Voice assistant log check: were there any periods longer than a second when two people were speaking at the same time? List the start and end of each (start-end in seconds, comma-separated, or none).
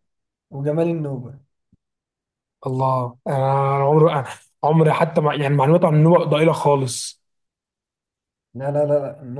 none